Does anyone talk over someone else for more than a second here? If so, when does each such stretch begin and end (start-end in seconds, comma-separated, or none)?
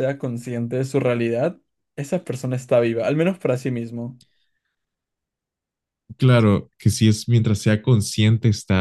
none